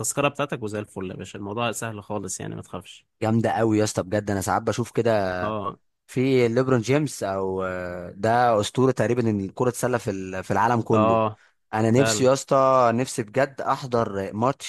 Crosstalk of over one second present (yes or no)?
no